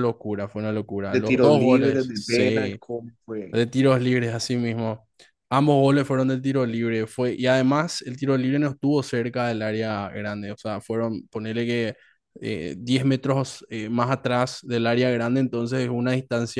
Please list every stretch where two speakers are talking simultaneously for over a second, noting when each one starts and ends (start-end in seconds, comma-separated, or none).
1.1-2.8